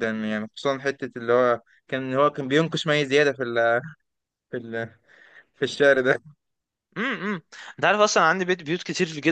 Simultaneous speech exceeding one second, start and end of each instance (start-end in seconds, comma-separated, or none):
none